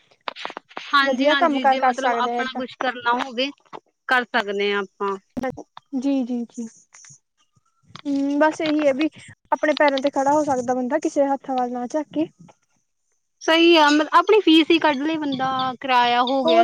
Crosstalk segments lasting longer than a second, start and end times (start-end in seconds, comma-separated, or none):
1.1-2.6